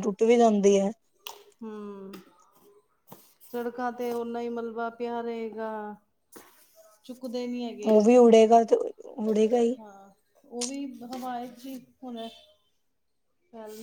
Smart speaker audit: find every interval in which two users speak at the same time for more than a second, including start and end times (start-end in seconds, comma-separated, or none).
none